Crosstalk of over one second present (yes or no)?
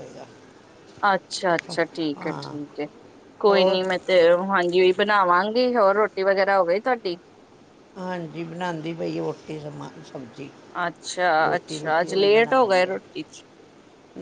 yes